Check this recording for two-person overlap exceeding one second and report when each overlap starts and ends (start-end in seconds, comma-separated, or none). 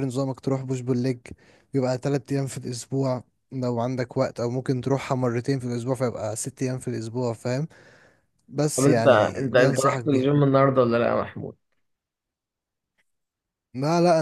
8.8-10.3